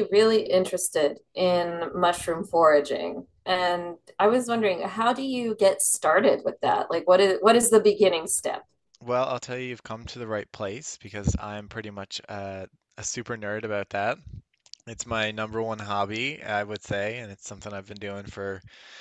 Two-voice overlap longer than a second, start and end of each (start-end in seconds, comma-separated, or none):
none